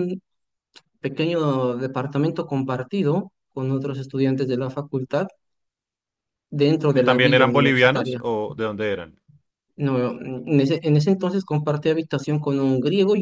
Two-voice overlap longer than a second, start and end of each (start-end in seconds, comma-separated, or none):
6.9-8.2